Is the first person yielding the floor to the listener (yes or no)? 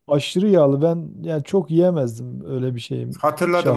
yes